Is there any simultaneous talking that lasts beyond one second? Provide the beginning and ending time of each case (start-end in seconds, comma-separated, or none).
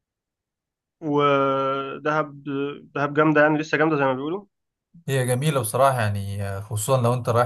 none